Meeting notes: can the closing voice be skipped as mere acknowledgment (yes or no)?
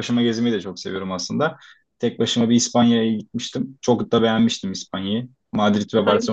no